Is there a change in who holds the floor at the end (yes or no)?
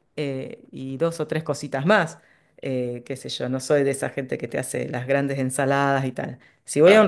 no